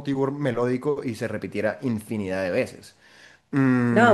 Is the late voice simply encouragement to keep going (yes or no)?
no